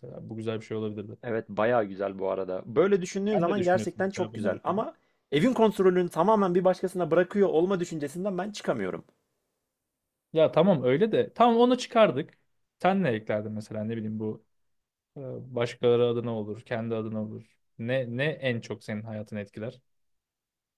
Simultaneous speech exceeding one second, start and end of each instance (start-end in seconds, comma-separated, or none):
3.3-4.8